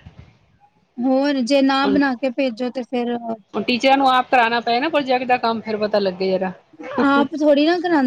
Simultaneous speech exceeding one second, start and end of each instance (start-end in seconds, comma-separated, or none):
none